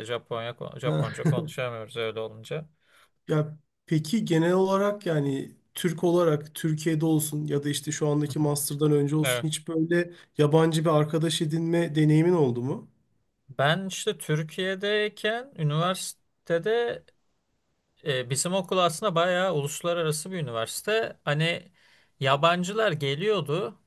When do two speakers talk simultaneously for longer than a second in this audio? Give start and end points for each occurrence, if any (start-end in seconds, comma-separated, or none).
none